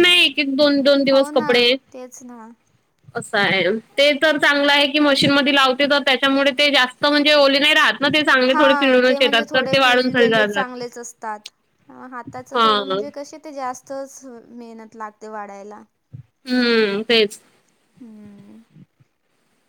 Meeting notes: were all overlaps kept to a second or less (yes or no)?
no